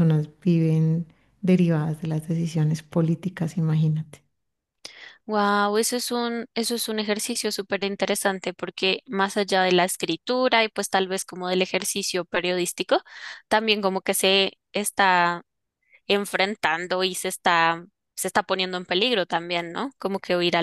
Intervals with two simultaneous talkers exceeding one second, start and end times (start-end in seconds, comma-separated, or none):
none